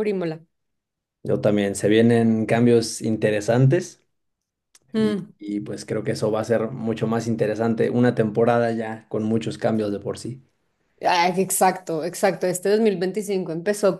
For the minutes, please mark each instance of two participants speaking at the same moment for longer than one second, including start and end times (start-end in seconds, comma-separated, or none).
none